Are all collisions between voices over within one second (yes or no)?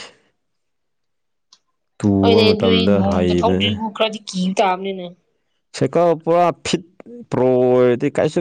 no